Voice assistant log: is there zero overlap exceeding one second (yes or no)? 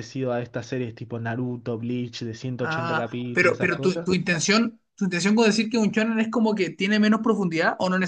no